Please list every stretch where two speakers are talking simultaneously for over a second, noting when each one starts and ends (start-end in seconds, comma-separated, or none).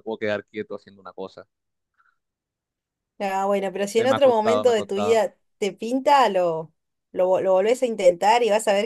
4.0-5.2